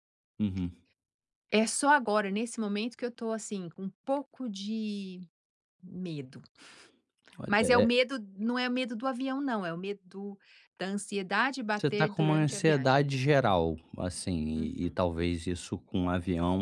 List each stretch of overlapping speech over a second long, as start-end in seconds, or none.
11.8-13.1